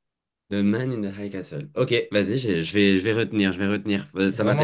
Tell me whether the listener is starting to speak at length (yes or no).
yes